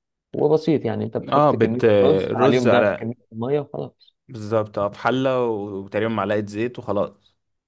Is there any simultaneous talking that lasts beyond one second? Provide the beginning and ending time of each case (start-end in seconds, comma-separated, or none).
1.3-3.1